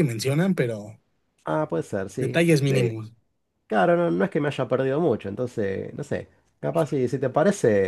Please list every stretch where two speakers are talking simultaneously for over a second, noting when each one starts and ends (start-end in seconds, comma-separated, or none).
none